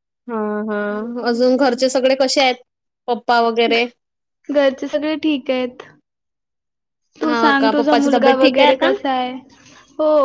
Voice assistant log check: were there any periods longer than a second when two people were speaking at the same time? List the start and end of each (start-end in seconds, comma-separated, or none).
7.2-8.9